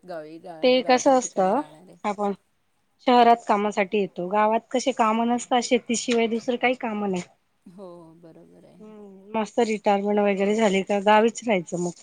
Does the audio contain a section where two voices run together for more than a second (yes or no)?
yes